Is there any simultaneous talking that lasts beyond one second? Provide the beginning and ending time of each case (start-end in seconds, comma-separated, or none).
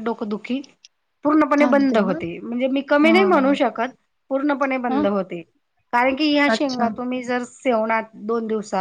none